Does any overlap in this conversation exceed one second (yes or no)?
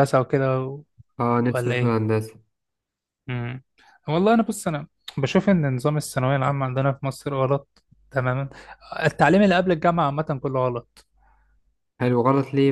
no